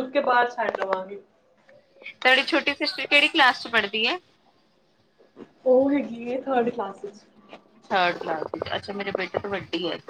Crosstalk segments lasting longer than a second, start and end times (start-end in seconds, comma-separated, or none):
none